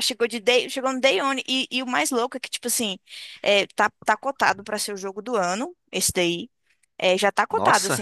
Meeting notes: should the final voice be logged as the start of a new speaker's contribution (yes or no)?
no